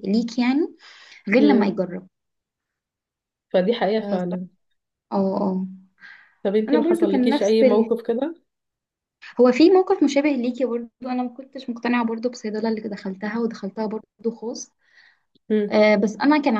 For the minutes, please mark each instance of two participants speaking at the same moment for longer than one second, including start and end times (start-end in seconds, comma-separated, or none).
6.7-7.9